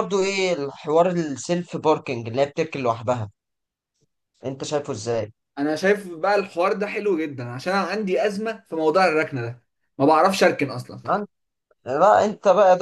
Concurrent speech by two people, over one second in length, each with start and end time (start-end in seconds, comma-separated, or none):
none